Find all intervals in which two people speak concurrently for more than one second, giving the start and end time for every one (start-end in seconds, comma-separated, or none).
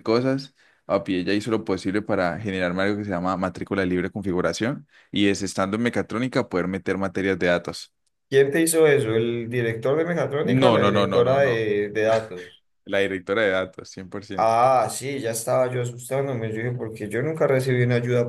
10.4-11.6